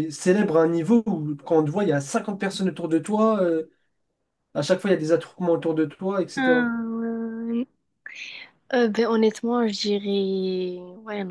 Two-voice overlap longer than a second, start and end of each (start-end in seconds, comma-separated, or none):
none